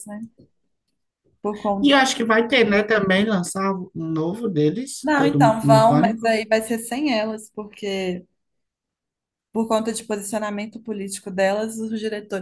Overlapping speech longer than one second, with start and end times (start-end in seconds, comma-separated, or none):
5.0-6.3